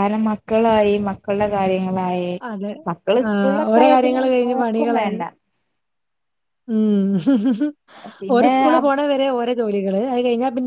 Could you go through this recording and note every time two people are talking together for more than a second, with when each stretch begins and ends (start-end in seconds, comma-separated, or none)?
3.3-5.2